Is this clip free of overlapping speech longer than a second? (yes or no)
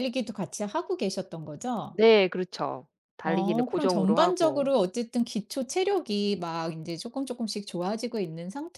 no